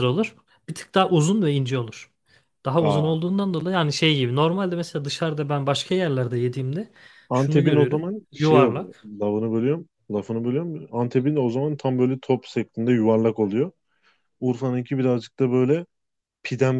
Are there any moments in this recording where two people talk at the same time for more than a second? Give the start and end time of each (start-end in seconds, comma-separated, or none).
7.3-9.1